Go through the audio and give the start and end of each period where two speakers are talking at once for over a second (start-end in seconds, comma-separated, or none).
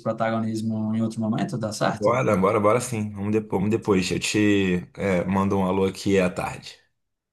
none